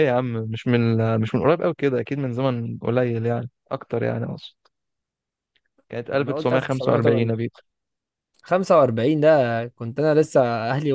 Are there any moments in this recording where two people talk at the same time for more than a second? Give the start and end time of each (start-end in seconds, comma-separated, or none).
6.1-7.4